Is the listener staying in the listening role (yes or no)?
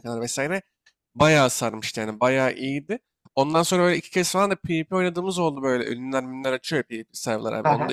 yes